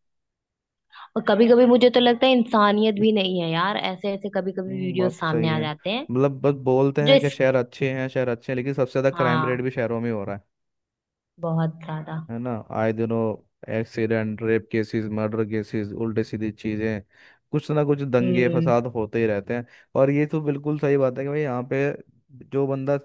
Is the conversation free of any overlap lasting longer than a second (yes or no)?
no